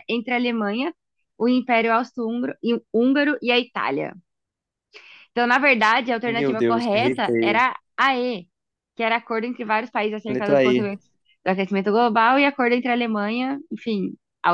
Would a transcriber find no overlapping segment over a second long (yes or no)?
no